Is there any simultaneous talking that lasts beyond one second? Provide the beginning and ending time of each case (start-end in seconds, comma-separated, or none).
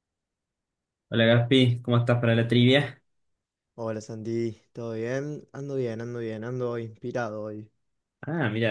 none